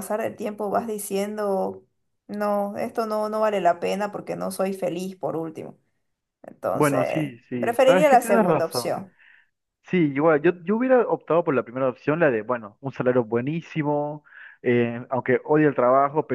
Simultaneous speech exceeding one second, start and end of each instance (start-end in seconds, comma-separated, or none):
6.7-9.0